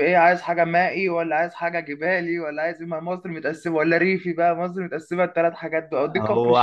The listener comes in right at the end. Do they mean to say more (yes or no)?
yes